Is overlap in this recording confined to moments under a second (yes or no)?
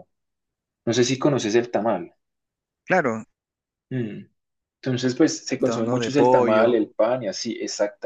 no